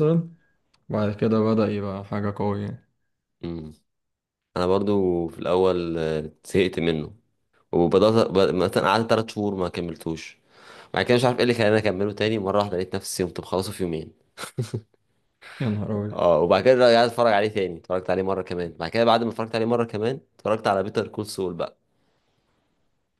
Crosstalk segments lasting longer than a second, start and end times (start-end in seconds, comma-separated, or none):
none